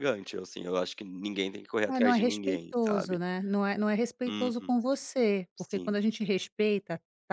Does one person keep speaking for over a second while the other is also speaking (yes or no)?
yes